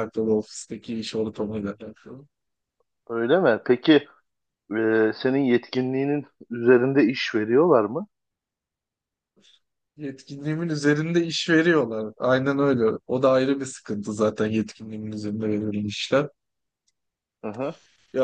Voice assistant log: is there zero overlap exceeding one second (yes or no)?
yes